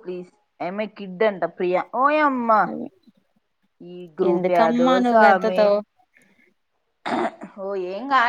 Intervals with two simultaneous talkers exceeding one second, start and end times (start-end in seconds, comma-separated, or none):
4.3-5.6